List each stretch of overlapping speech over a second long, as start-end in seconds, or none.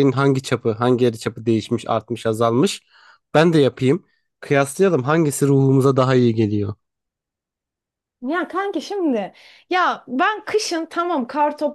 none